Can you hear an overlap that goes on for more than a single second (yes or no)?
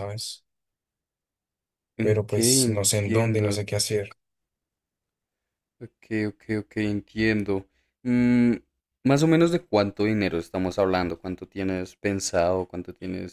yes